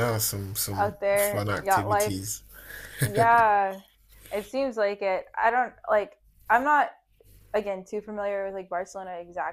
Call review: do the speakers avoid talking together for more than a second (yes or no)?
no